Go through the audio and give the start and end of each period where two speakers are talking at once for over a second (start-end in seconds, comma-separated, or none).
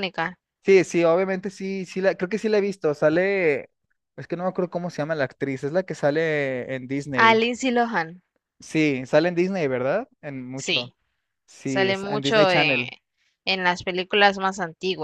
11.6-12.9